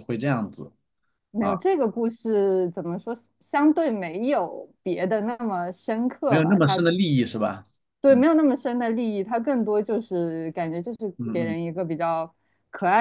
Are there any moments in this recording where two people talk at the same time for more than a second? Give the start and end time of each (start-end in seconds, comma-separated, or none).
none